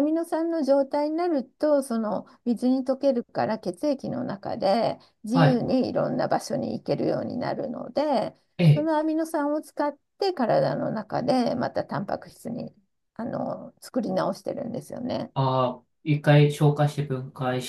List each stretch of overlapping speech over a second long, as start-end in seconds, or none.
none